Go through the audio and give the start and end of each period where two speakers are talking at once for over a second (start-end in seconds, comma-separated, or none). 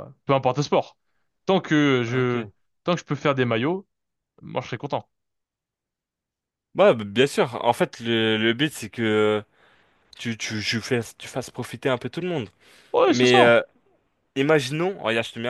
none